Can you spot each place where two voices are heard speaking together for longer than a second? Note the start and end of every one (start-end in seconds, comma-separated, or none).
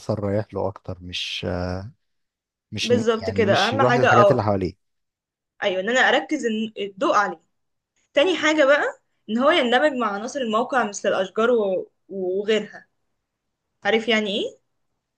2.8-4.4